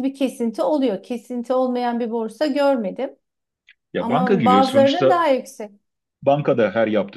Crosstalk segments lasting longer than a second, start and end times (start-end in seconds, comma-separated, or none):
4.0-5.2